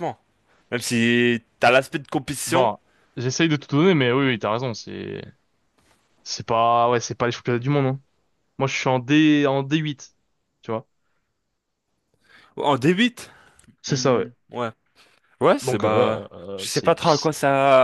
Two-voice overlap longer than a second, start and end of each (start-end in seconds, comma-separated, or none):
15.6-17.3